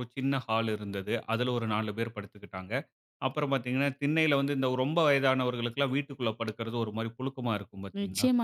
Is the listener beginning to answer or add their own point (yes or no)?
yes